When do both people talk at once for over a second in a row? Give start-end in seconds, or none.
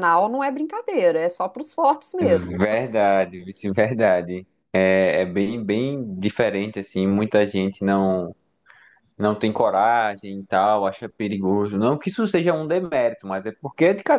none